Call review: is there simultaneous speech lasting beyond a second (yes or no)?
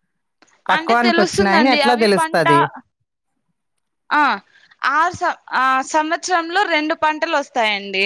yes